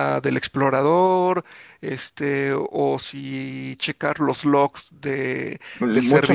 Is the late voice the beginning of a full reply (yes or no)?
yes